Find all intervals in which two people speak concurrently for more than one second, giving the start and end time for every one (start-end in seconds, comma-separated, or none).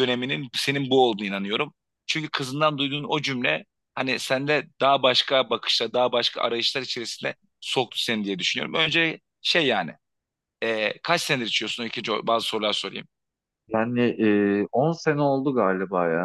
none